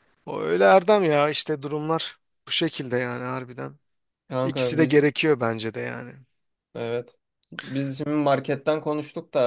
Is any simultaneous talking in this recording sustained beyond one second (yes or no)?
no